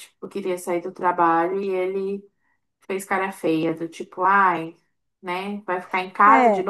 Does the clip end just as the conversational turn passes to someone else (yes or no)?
no